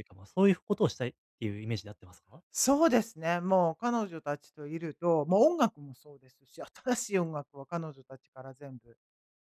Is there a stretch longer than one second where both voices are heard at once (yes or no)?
no